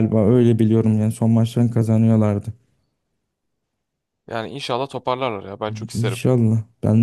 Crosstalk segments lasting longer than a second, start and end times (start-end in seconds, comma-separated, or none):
none